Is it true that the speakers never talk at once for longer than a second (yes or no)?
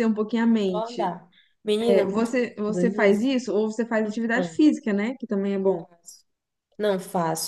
no